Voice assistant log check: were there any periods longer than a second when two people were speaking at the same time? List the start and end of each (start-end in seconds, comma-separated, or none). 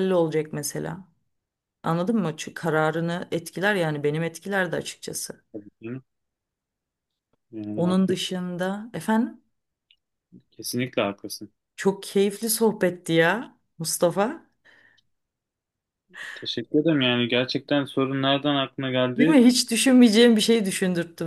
none